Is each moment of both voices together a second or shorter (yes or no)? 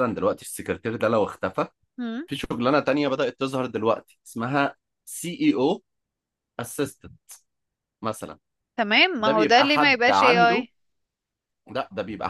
no